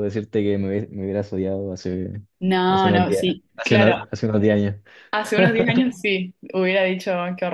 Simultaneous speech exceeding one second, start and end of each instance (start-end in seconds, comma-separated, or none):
2.7-4.0